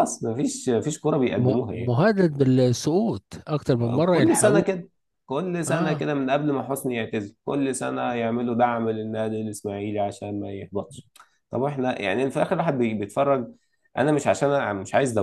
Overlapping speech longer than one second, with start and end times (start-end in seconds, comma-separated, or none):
none